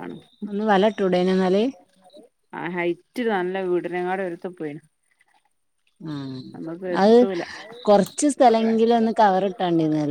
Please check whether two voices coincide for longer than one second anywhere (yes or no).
no